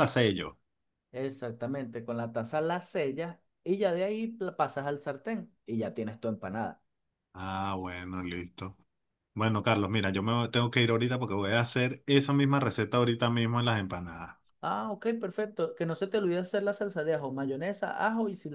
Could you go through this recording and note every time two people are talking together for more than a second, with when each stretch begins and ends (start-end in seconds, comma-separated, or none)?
none